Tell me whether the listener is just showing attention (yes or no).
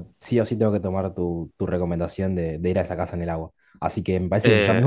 yes